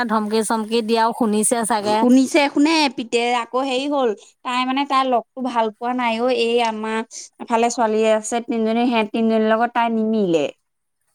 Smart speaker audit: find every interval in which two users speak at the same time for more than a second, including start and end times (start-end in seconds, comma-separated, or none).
none